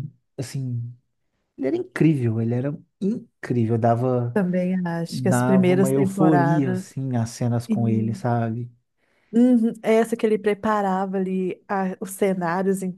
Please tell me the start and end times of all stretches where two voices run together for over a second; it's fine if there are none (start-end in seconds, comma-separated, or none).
5.1-6.8